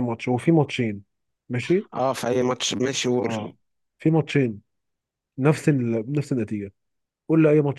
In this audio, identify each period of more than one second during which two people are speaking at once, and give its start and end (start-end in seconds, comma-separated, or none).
none